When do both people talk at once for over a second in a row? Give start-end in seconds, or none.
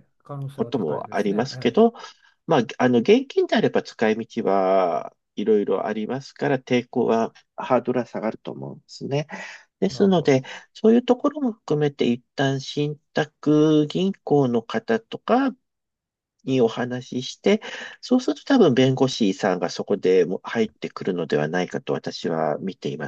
0.5-1.8